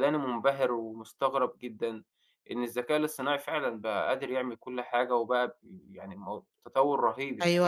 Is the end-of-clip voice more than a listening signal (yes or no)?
yes